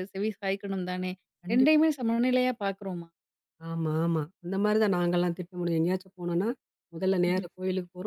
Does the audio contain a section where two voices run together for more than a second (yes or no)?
no